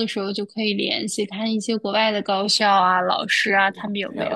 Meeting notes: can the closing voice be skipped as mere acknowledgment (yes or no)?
yes